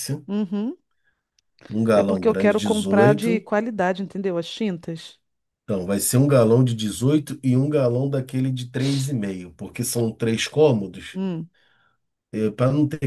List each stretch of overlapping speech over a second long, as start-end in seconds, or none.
1.9-3.5